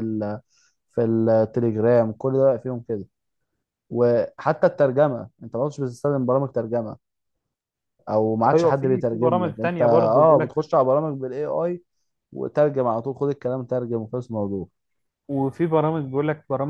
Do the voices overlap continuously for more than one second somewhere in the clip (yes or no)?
yes